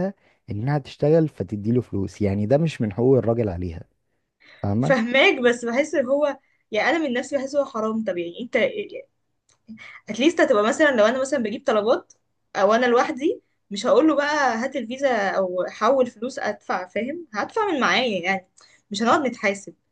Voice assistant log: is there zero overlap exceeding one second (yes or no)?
yes